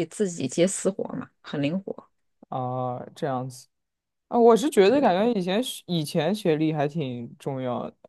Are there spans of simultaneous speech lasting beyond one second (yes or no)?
no